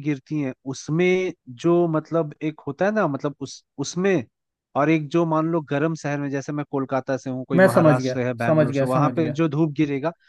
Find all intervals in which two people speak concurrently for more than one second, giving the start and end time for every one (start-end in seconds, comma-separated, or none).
7.5-9.4